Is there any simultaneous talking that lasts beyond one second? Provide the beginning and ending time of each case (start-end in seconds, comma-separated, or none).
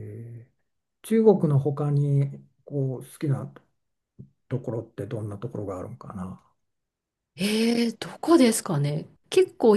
none